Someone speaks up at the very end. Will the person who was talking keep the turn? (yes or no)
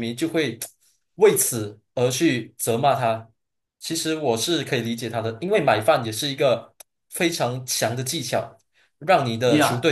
no